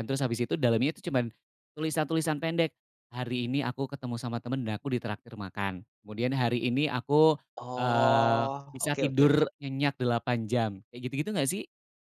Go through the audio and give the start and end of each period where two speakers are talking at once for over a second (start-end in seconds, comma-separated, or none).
7.8-9.4